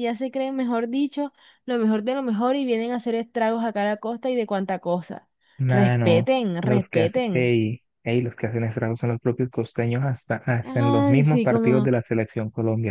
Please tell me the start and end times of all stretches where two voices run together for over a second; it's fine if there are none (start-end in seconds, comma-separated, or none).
5.7-7.5, 10.6-11.9